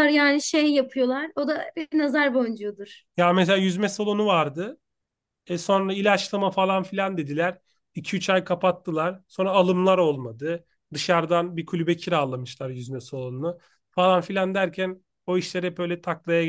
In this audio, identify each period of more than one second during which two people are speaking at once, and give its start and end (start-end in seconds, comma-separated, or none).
none